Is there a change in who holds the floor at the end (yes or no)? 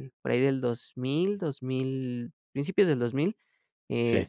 no